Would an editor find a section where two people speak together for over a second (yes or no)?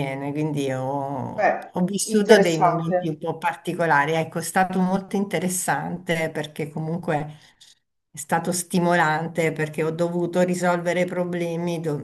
yes